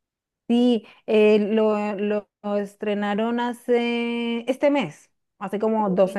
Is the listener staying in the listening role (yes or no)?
yes